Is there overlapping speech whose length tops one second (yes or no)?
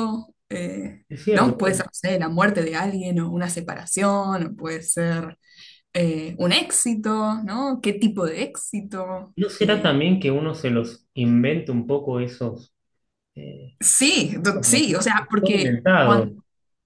yes